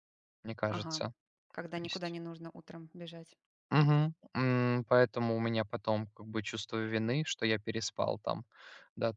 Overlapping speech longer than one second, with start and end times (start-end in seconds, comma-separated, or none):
none